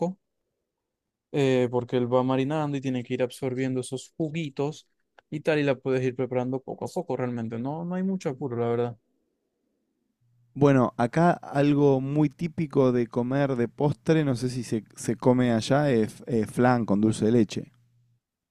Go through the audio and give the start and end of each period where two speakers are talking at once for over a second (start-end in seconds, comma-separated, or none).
none